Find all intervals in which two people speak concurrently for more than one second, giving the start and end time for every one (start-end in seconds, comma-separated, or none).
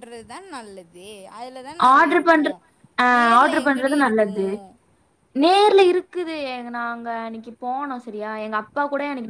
3.2-4.5